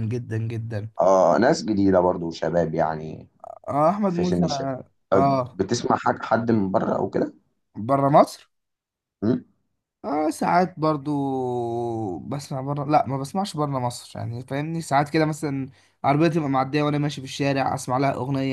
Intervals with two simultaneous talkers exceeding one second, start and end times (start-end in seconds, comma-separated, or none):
none